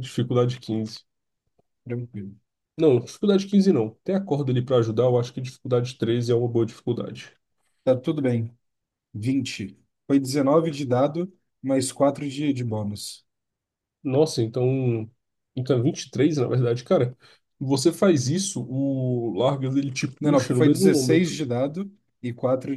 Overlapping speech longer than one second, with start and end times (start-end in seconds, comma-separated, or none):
20.2-21.4